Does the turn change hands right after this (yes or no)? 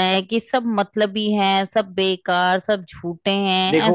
yes